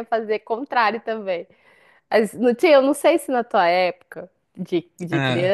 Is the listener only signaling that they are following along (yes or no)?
yes